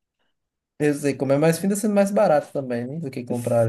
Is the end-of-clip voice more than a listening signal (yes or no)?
yes